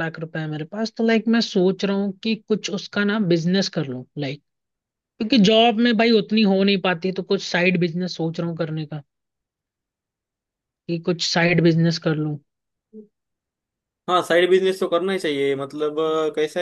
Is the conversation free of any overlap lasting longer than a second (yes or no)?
yes